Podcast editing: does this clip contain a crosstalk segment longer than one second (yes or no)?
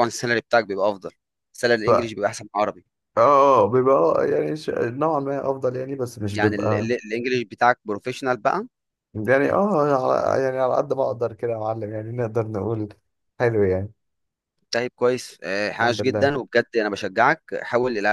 no